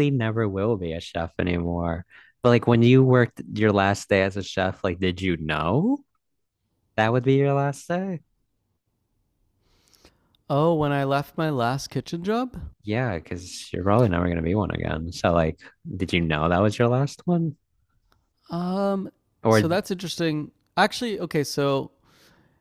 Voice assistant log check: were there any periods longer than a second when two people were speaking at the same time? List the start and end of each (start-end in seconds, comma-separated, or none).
none